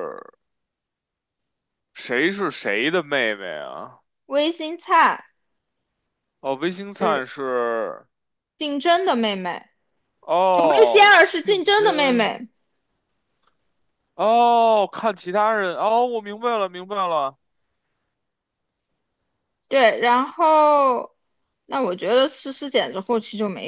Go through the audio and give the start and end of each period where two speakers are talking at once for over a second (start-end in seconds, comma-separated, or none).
10.5-12.3